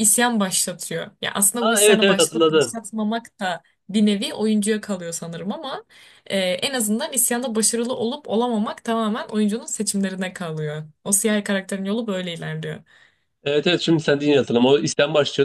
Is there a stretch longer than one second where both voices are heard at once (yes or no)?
yes